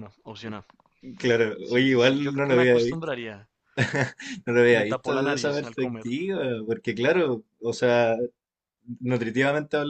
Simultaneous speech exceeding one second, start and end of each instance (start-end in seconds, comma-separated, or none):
1.6-3.1, 4.7-6.1